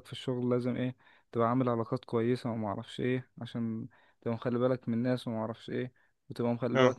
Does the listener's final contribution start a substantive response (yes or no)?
no